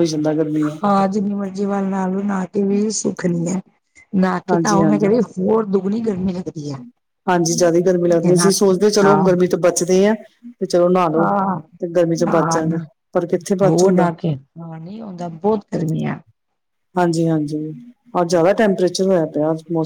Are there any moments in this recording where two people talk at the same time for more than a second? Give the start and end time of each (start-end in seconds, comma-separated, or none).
none